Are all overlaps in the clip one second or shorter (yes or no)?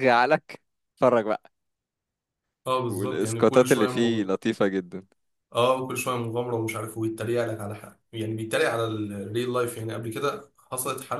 no